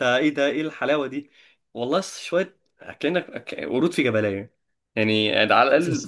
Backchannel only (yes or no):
yes